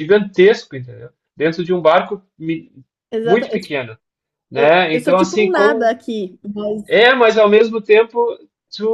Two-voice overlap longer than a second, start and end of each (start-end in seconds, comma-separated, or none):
4.5-6.0